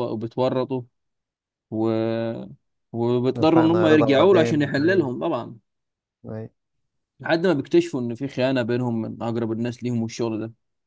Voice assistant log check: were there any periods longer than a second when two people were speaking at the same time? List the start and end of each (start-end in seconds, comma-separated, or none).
3.4-5.1